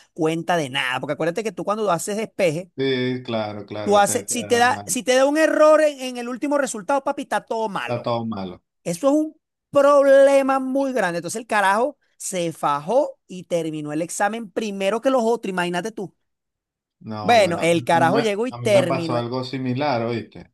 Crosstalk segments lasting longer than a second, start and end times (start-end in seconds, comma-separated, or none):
17.2-19.3